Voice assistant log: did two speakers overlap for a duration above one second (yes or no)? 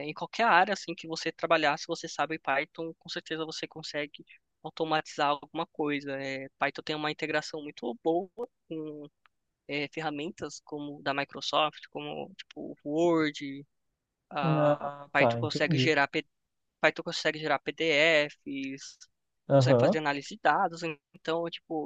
yes